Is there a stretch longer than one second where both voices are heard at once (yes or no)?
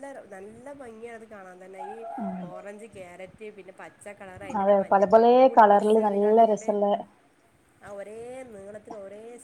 yes